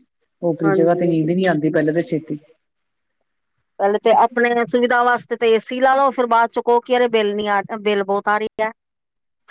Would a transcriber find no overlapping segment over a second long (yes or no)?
yes